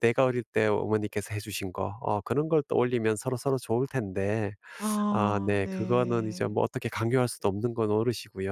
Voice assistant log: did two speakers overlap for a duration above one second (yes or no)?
yes